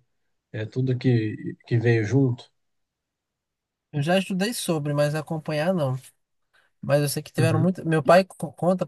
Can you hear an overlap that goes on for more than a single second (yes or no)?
no